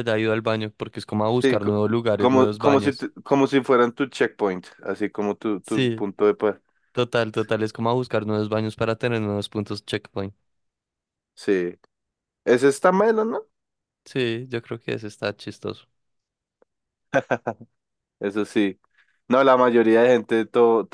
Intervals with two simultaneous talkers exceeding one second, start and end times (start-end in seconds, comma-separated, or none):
1.4-3.1